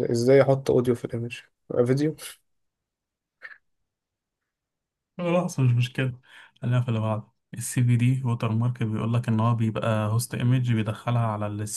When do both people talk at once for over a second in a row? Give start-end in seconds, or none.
none